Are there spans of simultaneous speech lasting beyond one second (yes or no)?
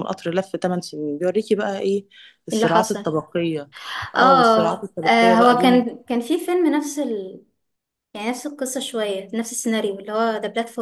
yes